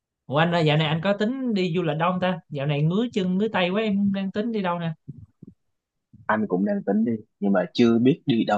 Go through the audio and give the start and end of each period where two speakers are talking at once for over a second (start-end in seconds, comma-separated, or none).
none